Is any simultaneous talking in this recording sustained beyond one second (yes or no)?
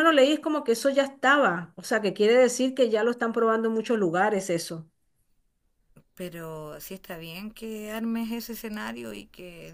no